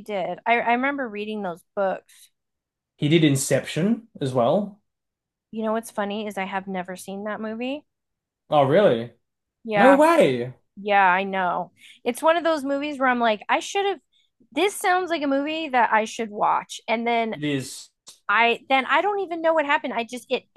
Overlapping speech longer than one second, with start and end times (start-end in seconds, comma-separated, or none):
none